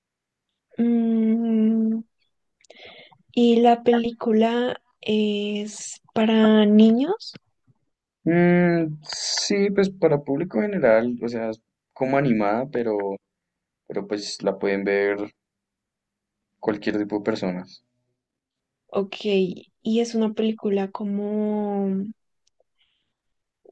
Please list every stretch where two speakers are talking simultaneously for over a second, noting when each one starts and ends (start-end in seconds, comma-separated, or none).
none